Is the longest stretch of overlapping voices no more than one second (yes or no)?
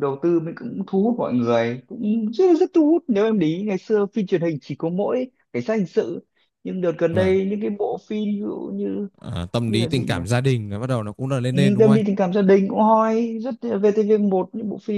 yes